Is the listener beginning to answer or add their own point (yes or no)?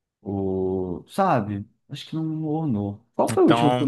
no